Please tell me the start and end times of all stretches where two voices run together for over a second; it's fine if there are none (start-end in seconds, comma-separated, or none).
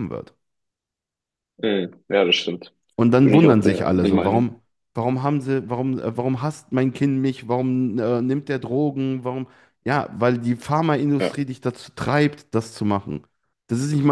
3.2-4.6